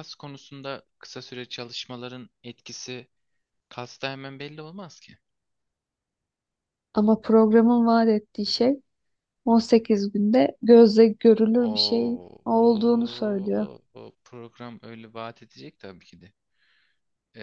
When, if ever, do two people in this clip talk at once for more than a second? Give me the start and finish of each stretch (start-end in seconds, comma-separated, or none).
11.6-13.7